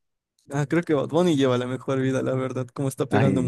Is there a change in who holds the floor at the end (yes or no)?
yes